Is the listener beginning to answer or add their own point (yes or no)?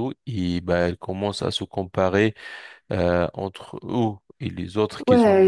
yes